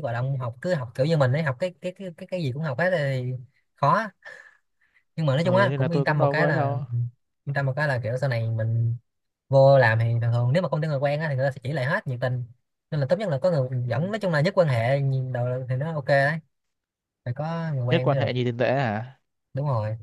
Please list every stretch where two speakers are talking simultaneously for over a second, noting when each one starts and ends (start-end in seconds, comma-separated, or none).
5.4-6.8